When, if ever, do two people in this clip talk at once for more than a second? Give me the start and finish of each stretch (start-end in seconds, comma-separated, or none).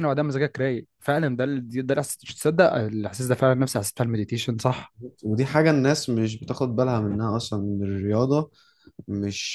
none